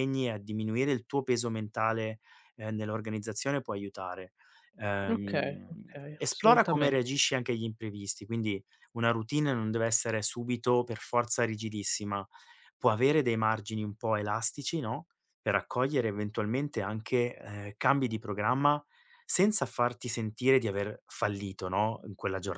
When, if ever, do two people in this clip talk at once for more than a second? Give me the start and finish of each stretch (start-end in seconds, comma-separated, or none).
5.1-7.0